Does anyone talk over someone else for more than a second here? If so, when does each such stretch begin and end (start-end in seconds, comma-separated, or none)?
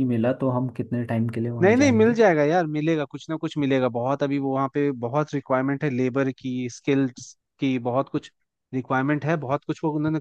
none